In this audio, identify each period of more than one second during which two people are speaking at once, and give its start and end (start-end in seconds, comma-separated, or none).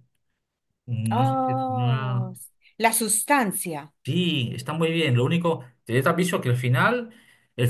1.1-2.3